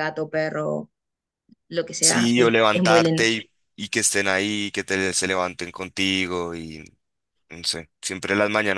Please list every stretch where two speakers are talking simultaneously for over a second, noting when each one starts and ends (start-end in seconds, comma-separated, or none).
2.0-3.2